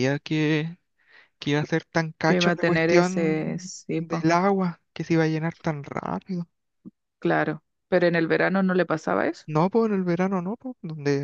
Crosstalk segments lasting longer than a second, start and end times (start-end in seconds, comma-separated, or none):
2.2-4.3